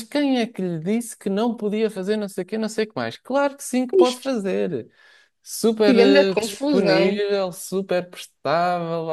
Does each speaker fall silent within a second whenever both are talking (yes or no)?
no